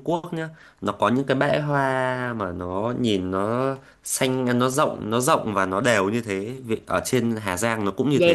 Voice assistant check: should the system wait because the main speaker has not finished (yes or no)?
no